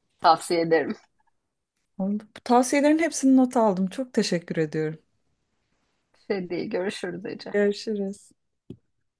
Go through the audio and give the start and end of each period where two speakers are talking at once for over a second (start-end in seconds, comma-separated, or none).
none